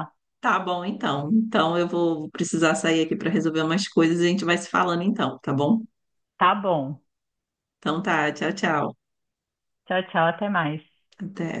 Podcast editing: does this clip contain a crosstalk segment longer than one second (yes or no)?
no